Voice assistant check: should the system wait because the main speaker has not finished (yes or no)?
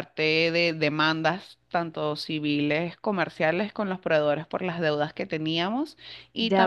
no